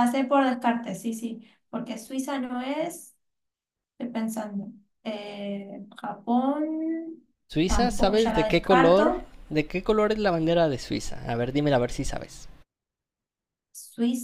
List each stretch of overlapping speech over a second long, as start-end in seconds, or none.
7.7-9.1